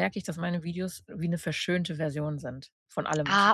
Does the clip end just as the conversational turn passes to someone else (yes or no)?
yes